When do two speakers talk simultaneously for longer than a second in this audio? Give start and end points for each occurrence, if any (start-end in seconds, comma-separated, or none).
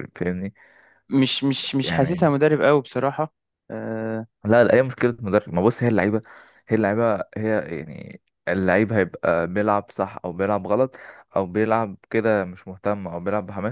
none